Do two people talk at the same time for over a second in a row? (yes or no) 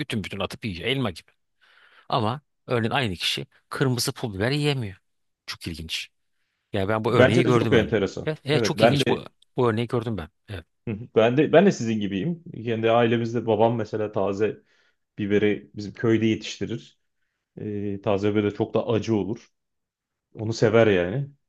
yes